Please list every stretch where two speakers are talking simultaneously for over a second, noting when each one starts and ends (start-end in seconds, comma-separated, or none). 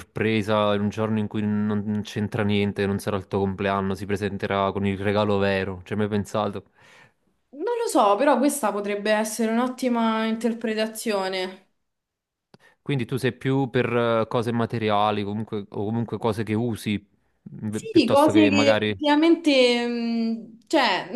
17.7-19.2